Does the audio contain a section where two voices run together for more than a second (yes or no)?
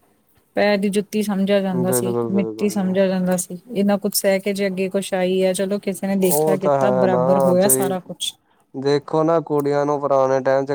yes